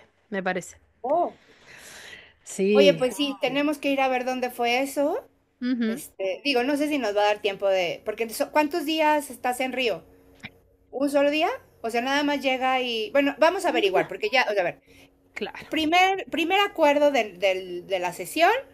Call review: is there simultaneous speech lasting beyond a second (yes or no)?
no